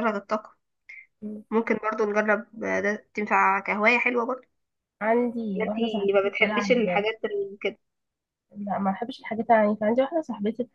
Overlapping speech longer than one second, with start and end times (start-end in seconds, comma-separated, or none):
5.6-6.8